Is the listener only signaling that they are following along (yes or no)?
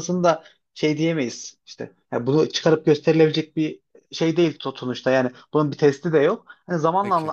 yes